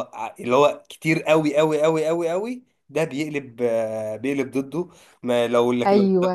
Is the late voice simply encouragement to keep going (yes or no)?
yes